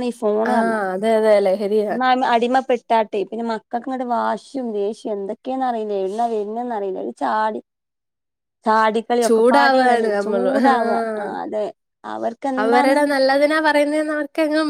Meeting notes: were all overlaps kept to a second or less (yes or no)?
no